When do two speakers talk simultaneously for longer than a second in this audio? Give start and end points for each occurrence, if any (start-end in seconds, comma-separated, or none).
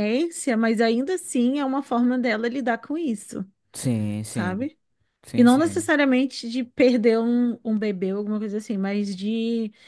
none